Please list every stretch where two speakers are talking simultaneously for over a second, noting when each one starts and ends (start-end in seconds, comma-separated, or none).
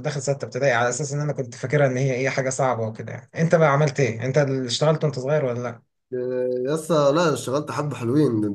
none